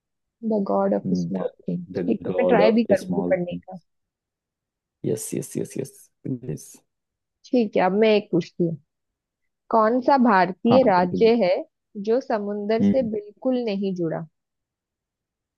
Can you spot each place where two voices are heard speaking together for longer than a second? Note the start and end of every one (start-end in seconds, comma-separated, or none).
2.0-3.8